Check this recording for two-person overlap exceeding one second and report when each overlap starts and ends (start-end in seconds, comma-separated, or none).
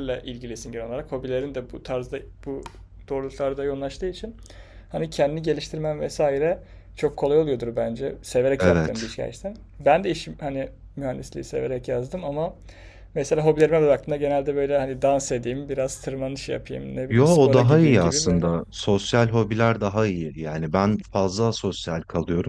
17.1-18.5